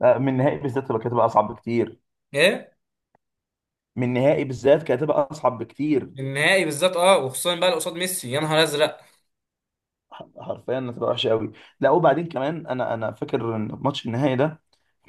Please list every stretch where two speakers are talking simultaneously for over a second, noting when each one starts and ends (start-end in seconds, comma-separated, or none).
none